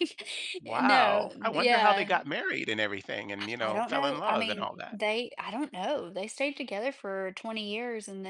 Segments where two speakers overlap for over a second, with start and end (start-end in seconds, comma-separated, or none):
0.7-2.1, 3.4-5.0